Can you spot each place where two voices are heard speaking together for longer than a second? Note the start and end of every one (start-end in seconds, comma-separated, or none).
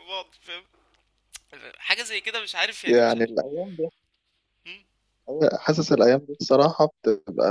none